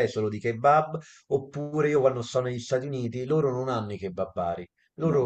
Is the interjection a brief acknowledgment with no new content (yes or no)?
yes